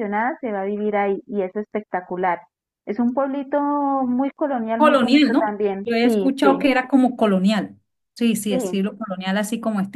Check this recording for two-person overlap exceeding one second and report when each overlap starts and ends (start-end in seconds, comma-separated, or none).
4.8-6.6